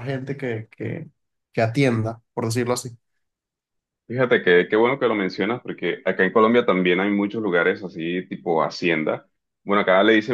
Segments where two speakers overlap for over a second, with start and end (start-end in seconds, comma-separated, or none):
none